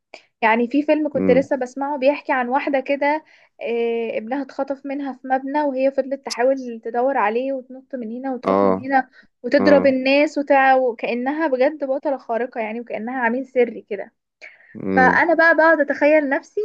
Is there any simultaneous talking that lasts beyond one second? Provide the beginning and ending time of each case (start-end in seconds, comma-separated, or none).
none